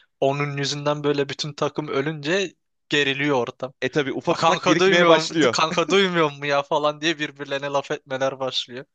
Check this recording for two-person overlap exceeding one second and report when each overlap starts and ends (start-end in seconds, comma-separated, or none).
4.3-5.6